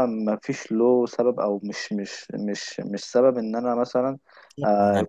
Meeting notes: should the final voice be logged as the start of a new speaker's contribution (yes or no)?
no